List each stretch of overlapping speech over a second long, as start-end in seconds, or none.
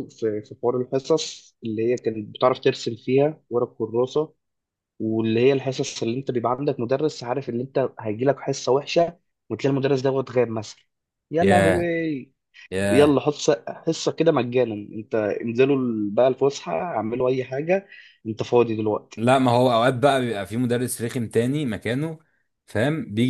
none